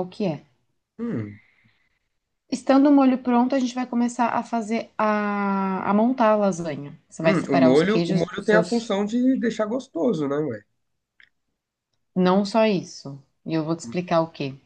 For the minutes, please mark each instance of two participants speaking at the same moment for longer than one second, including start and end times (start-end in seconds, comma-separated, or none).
7.2-8.9